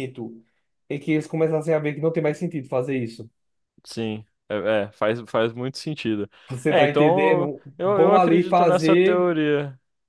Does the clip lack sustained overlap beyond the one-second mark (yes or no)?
no